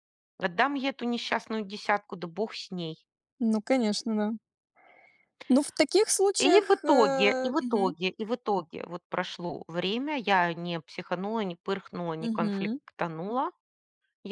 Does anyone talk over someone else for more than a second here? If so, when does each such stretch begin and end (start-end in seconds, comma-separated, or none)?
6.4-7.9